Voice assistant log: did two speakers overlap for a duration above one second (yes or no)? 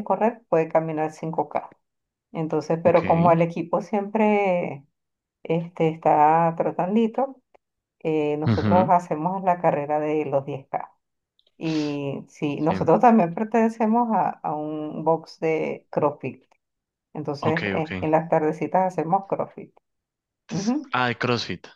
no